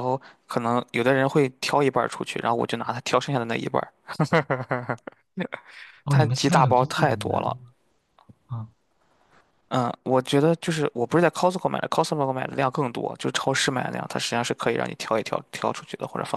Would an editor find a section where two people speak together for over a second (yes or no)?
yes